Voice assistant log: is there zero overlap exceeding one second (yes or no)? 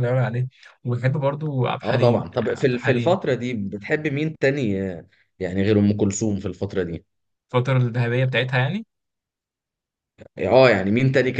no